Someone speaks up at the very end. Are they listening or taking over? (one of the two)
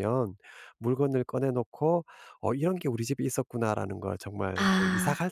listening